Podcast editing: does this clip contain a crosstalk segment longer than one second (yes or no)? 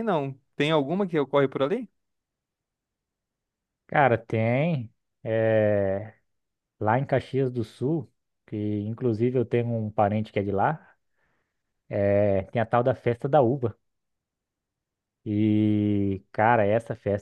no